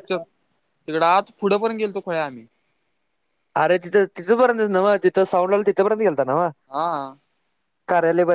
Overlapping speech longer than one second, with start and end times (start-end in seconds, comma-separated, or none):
none